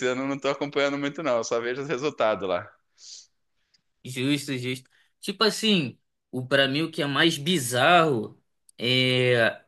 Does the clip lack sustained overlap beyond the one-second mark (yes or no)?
yes